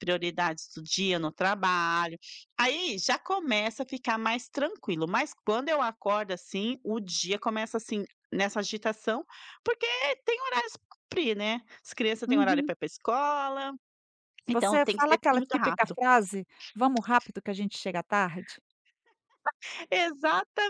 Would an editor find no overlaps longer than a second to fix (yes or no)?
no